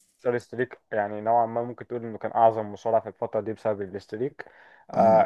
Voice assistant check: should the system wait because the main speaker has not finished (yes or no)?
yes